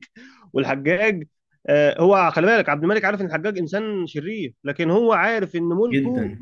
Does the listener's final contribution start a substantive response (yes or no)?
no